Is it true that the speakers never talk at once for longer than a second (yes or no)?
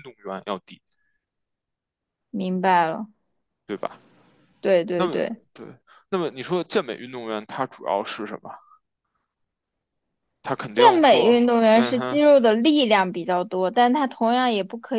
no